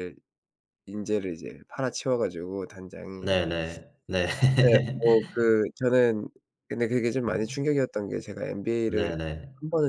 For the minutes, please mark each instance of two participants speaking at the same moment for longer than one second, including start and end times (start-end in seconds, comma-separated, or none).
none